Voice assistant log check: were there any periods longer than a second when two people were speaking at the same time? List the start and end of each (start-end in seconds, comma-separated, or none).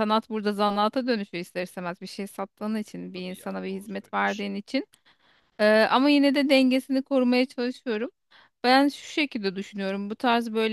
2.6-4.5